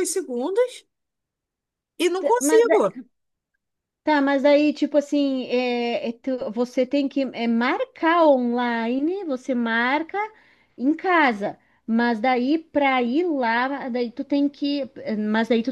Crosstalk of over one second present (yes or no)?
no